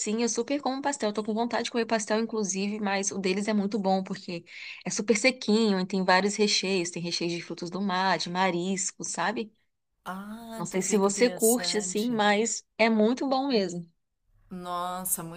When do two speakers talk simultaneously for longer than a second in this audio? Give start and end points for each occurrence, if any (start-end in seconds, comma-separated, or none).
10.5-12.2